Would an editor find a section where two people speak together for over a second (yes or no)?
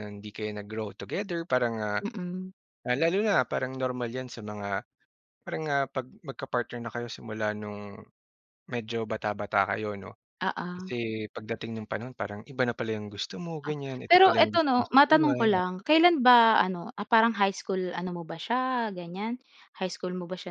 yes